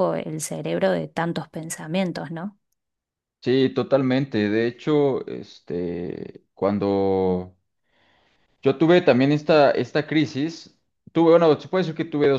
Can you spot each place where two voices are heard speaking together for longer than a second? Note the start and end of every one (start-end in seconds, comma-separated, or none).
none